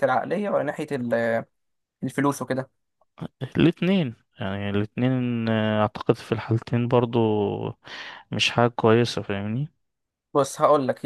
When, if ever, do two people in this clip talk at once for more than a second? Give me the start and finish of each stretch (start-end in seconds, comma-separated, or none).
none